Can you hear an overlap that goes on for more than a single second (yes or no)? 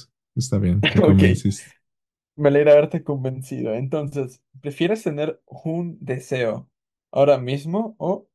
no